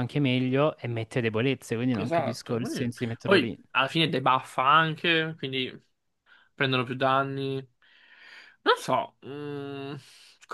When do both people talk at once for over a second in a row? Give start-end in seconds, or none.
2.0-3.6